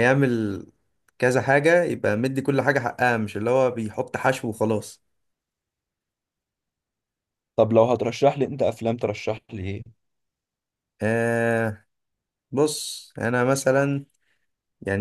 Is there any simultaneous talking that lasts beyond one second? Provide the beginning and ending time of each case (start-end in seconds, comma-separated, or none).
none